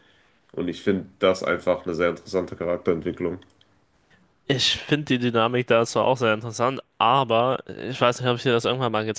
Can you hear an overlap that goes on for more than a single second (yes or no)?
no